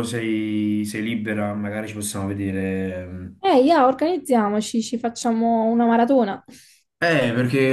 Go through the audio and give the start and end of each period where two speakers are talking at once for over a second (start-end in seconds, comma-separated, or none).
none